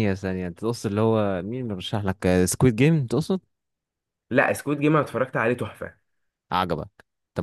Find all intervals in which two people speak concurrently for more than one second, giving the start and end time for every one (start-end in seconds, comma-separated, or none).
none